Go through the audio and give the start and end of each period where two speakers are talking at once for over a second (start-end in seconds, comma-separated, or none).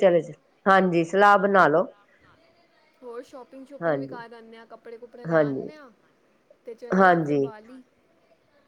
none